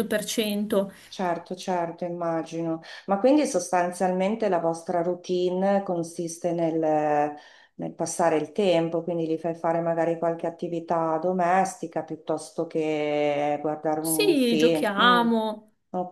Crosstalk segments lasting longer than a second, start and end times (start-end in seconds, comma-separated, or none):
14.0-15.3